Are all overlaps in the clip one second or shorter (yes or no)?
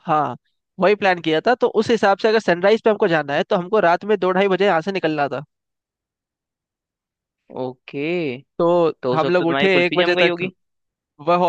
no